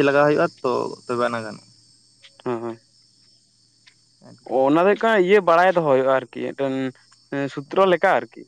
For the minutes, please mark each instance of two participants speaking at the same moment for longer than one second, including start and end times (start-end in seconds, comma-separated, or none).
none